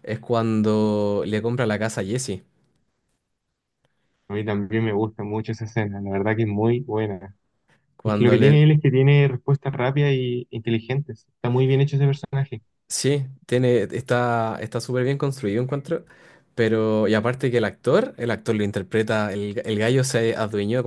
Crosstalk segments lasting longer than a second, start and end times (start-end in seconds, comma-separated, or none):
none